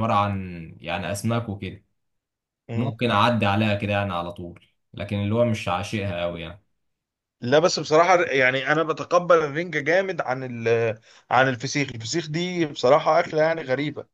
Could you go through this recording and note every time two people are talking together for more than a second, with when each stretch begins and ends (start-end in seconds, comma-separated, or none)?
none